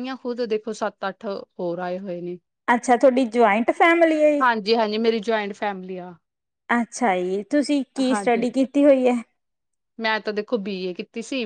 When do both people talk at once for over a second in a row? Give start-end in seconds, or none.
none